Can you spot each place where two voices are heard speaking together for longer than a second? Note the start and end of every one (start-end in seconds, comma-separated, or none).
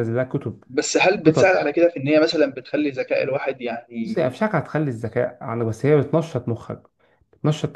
none